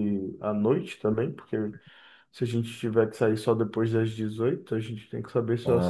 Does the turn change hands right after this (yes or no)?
yes